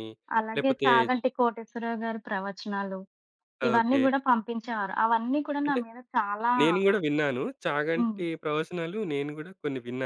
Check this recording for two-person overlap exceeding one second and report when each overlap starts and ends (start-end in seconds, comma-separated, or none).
none